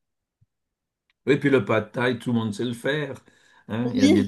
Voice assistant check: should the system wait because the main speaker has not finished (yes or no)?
yes